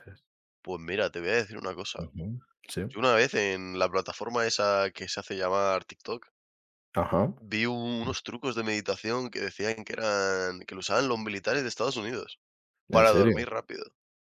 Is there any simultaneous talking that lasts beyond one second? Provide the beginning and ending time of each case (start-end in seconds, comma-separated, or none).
none